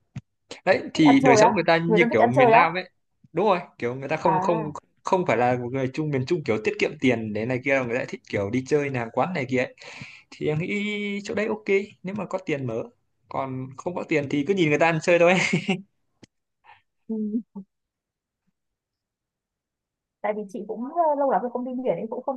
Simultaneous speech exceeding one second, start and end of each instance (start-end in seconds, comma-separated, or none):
0.9-2.7